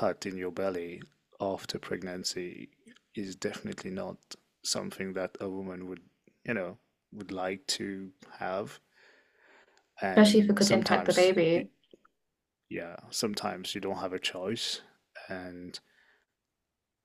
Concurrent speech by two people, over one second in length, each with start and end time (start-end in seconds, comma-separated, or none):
10.0-11.3